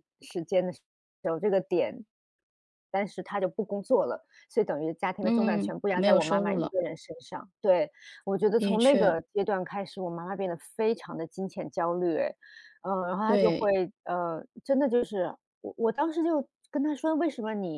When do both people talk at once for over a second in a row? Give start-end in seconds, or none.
5.2-6.7